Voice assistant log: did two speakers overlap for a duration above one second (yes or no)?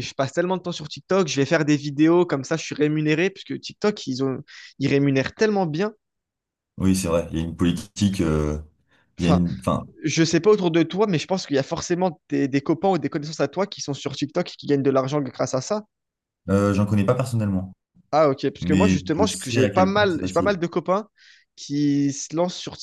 yes